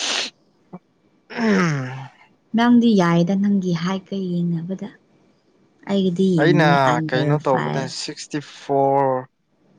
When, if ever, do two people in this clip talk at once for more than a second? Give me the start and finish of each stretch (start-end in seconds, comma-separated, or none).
6.4-7.9